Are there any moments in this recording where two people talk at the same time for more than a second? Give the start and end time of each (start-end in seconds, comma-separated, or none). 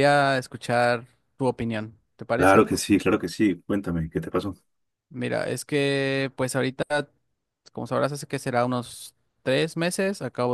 none